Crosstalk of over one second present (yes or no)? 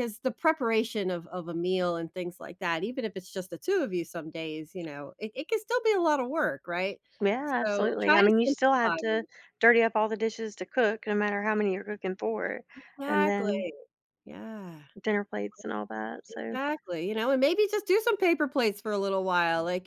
yes